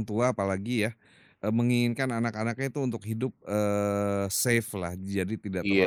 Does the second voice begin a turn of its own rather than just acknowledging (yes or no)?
no